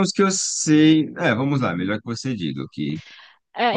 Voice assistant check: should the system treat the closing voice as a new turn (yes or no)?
yes